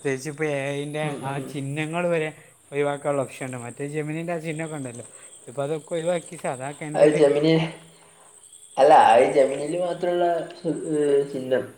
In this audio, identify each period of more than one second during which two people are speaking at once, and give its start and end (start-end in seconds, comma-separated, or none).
none